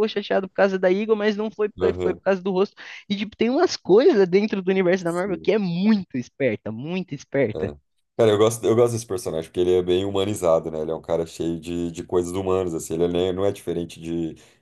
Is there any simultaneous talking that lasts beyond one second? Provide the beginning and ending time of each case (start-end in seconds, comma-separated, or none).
none